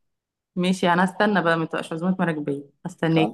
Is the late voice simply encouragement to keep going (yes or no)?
no